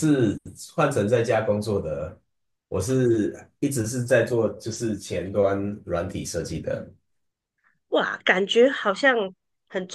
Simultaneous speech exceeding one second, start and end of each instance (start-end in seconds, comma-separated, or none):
none